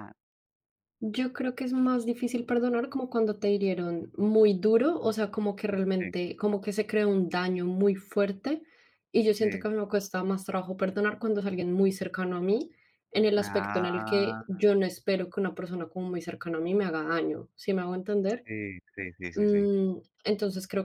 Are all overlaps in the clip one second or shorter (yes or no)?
no